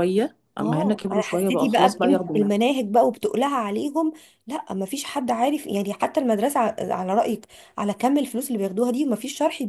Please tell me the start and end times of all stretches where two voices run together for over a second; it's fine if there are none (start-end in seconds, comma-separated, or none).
0.6-2.5